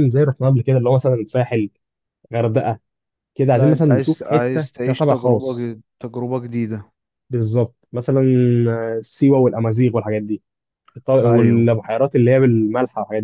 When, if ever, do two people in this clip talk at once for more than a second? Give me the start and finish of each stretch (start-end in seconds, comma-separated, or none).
3.5-5.7